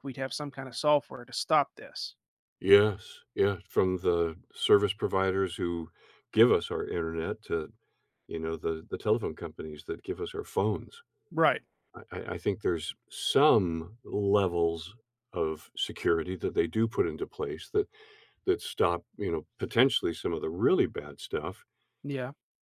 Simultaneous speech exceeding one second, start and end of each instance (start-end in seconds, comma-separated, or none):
none